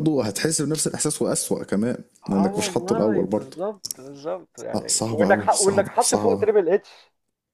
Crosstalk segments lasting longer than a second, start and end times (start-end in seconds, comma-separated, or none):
2.2-3.6, 4.7-6.5